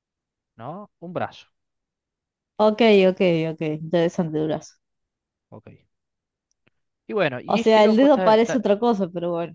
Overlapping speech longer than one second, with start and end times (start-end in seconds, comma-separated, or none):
7.5-8.8